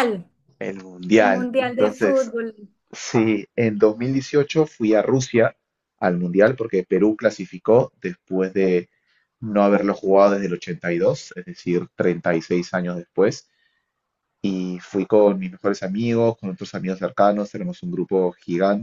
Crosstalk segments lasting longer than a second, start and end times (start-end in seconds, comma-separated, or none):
1.1-2.3